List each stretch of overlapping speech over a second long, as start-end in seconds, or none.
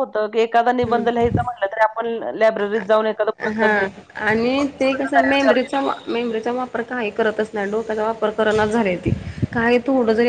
none